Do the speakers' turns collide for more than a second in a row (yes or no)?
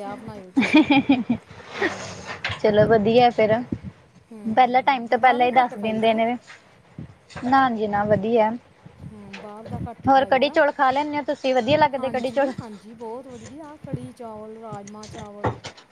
yes